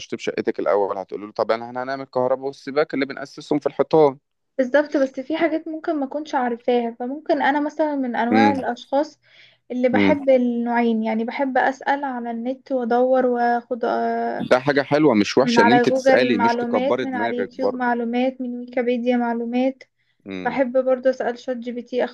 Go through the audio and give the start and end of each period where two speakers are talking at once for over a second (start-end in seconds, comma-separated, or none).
15.4-17.9